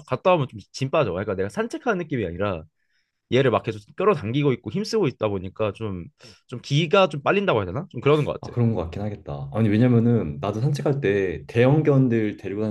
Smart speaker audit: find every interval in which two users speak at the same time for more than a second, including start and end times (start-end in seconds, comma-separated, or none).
none